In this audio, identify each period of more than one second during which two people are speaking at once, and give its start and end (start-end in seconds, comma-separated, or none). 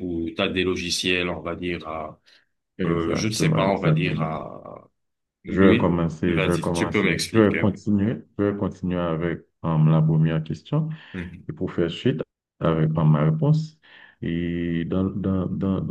2.9-4.3, 5.5-7.8